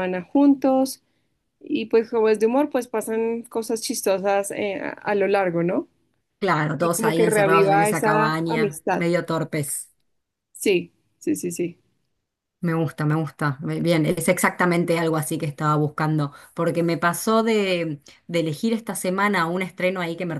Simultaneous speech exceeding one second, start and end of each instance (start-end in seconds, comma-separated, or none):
6.8-9.1